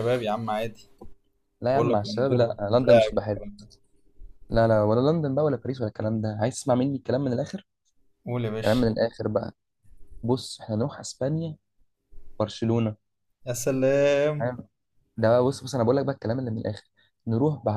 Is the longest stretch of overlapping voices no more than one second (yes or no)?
no